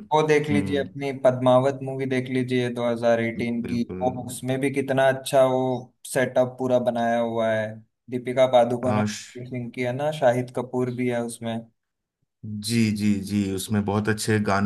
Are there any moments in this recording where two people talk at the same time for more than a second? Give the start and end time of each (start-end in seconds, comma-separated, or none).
none